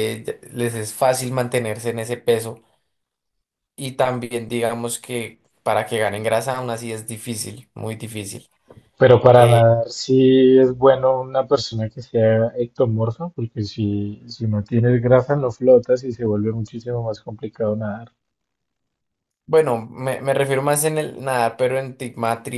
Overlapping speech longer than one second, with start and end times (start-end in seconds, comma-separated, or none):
none